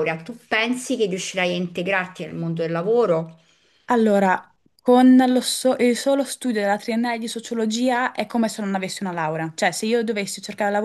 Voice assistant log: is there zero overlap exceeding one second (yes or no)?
yes